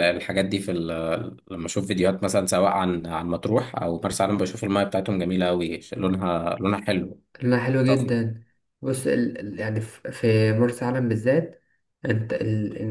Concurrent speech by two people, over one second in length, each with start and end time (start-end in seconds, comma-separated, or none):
none